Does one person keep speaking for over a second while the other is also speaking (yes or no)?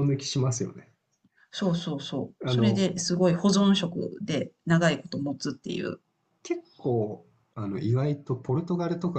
no